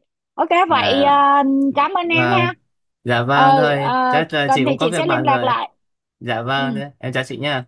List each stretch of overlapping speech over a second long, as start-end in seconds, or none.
3.3-5.6